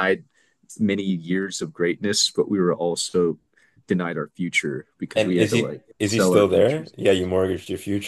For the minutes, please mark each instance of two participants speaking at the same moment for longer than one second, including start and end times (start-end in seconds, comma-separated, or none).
5.2-7.1